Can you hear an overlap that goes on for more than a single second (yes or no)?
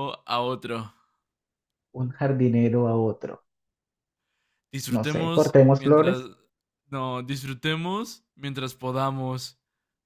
yes